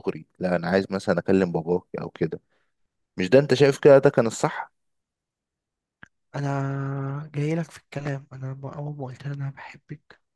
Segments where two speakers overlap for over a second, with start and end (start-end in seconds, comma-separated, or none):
none